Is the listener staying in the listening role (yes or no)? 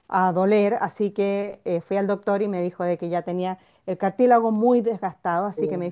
yes